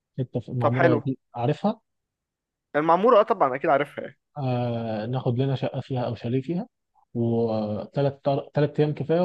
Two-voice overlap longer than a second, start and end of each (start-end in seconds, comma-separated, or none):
none